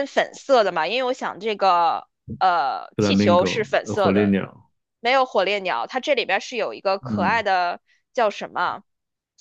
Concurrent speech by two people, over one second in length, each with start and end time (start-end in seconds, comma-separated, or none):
3.0-4.4